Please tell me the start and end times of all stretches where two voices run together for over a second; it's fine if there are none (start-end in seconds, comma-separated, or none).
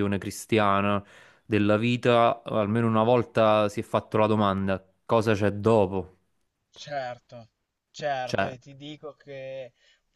none